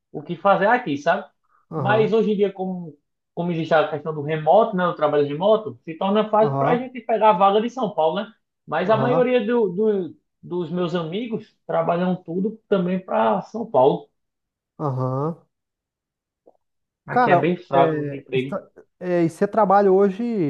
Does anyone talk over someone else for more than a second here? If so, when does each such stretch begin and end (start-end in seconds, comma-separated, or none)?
17.1-18.6